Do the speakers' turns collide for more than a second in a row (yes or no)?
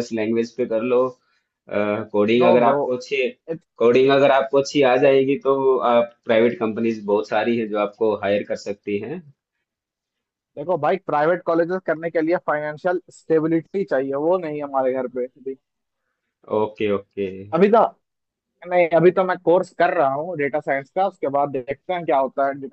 no